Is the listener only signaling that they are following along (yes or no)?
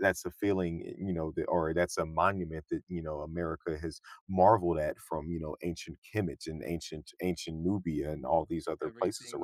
no